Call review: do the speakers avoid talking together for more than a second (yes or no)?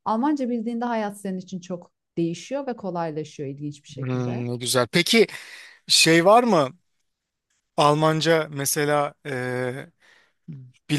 yes